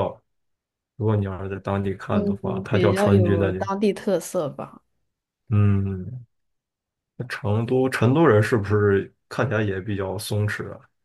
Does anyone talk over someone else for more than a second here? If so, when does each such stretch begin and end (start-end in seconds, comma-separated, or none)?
2.1-3.6